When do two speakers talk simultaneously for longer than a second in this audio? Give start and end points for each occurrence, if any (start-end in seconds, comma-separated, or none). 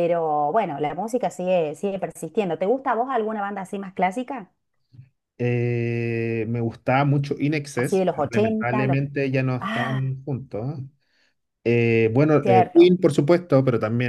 7.8-9.0